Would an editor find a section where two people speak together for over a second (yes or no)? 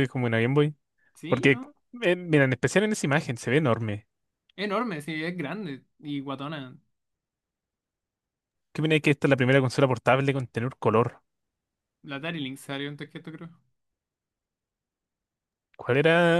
no